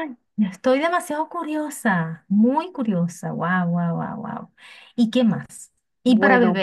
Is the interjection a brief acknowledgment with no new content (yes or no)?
yes